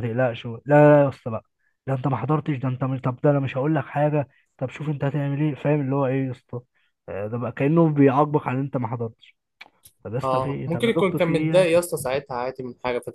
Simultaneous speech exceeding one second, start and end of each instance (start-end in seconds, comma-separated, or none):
10.2-11.7